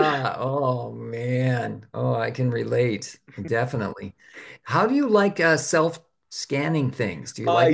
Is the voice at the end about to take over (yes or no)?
yes